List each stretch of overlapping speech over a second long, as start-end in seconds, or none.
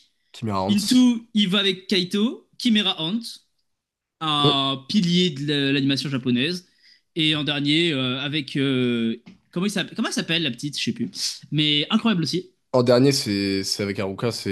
none